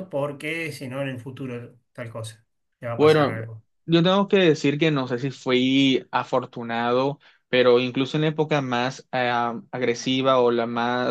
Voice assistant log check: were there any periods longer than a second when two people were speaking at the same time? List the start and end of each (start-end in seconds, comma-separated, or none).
none